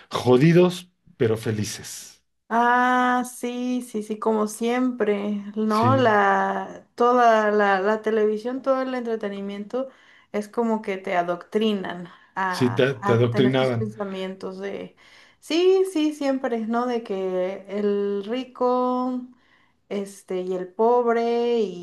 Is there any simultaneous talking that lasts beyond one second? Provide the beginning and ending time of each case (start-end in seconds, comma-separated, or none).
12.5-13.9